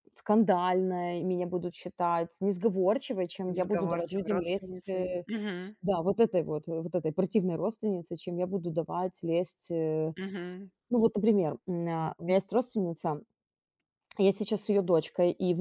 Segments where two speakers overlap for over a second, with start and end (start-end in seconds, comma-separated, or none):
3.5-5.2